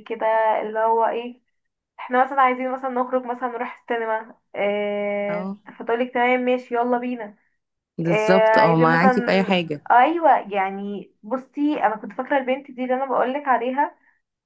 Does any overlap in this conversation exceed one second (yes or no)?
yes